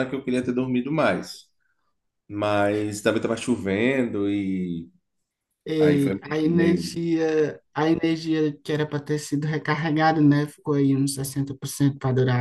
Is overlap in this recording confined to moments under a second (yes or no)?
no